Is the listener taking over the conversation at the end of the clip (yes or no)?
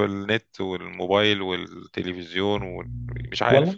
yes